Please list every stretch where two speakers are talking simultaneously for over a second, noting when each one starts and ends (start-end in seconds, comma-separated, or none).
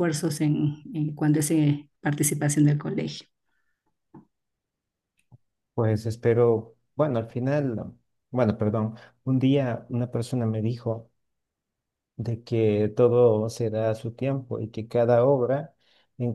none